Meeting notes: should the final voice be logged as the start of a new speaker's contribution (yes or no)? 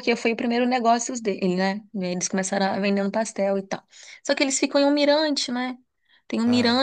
no